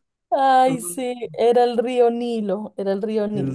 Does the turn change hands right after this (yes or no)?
yes